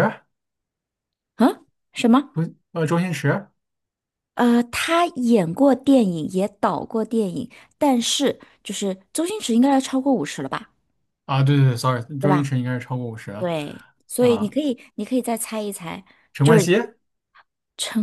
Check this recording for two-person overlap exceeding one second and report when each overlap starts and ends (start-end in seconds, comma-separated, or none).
none